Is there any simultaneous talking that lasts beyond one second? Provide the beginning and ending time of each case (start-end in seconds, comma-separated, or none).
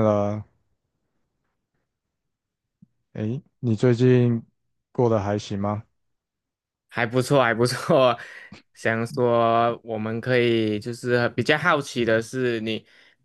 none